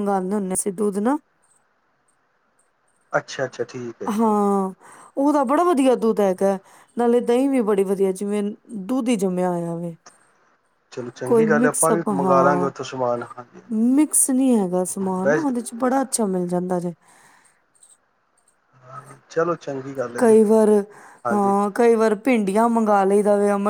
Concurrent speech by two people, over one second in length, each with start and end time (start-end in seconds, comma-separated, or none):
11.3-12.7